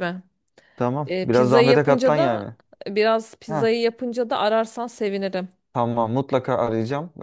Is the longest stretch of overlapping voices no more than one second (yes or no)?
no